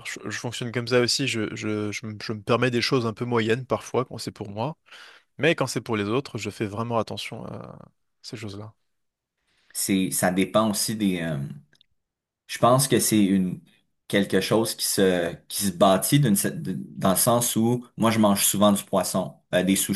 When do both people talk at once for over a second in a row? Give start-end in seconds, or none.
none